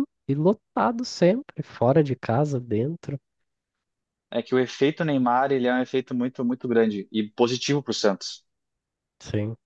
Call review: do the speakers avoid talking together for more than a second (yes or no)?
yes